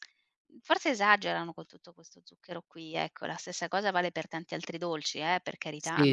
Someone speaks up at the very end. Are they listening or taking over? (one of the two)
taking over